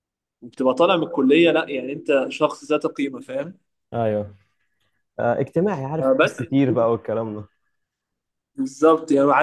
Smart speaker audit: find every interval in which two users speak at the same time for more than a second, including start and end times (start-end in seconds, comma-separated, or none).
none